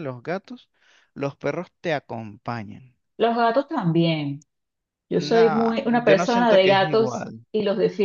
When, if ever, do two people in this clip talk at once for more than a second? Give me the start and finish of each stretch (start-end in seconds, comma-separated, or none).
5.2-7.5